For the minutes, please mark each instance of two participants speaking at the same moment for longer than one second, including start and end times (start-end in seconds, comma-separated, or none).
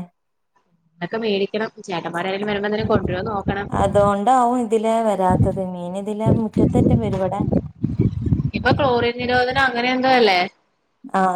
none